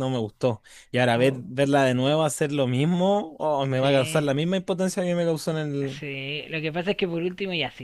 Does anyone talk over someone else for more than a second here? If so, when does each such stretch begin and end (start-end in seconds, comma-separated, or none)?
none